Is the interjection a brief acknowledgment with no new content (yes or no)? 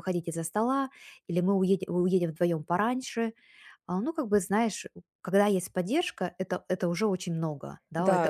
no